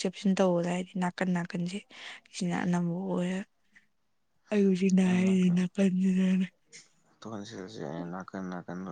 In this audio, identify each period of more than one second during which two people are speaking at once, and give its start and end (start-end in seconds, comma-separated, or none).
none